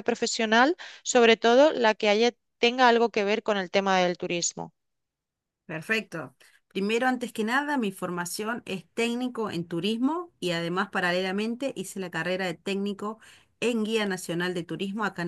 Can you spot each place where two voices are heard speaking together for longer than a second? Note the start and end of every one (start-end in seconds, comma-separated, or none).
none